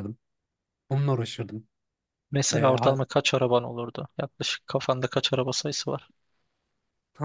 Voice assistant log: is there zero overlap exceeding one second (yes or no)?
yes